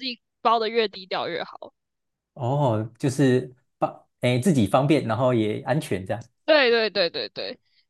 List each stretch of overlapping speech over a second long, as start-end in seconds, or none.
none